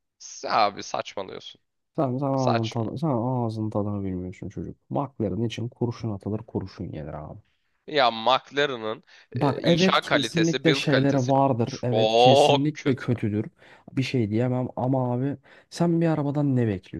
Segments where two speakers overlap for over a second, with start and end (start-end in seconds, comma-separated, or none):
9.3-13.1